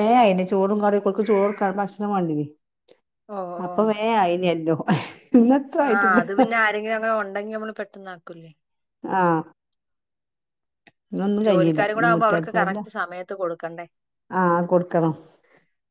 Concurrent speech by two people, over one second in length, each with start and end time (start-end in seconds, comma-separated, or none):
11.4-12.8